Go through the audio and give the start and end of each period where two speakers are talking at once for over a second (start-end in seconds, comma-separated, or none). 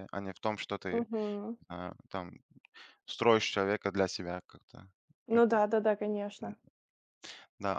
none